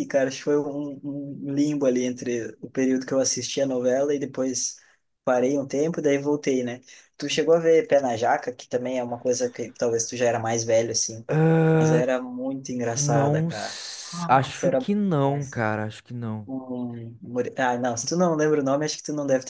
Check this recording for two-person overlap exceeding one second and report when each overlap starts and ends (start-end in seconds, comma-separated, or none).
12.9-15.6